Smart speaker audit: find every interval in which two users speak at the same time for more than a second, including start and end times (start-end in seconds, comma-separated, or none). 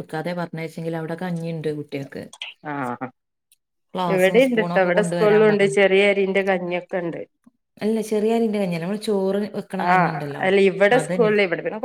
none